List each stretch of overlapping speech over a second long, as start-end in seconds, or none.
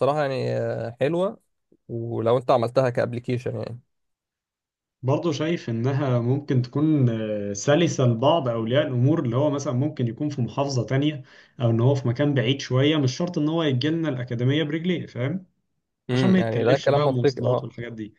16.1-17.7